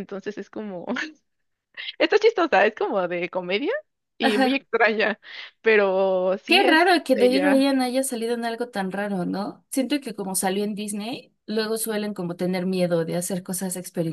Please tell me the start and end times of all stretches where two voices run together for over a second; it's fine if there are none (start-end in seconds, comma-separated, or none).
6.5-7.7